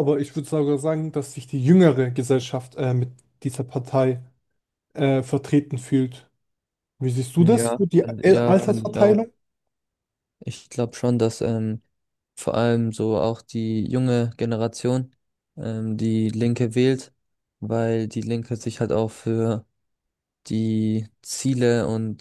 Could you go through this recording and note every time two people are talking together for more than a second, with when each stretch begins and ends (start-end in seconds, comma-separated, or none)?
7.4-9.2